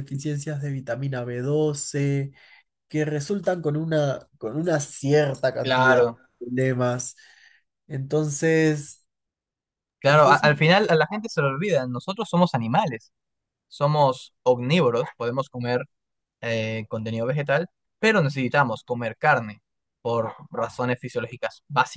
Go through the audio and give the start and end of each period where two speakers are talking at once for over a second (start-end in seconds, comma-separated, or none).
none